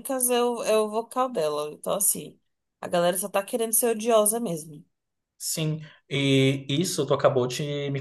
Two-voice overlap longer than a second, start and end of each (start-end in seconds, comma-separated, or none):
none